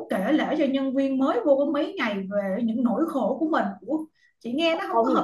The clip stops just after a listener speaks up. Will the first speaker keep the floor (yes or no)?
no